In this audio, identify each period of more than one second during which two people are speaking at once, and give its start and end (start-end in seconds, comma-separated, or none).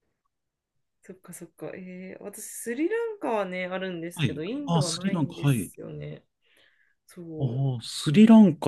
4.1-5.7